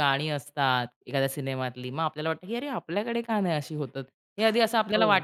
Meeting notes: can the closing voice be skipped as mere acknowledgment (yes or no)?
yes